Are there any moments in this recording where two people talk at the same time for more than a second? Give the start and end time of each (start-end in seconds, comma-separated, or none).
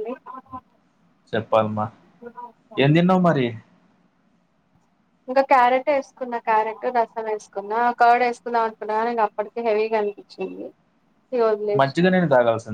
none